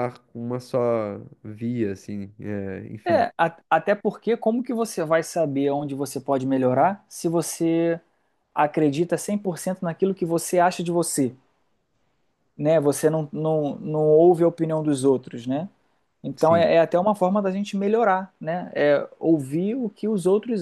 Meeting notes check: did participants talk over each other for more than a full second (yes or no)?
no